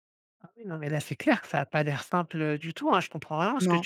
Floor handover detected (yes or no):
no